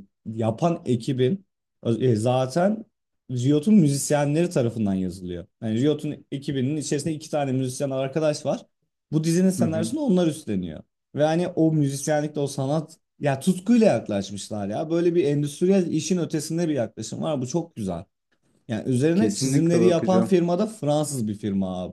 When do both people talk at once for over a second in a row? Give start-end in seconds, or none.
19.1-20.4